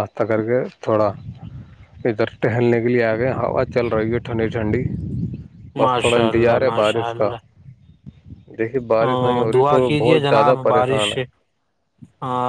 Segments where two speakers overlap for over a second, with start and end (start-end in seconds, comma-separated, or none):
5.8-7.1, 9.0-11.1